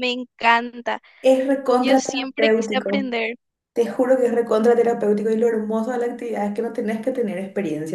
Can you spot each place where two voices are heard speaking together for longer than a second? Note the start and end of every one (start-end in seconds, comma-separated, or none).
1.8-3.0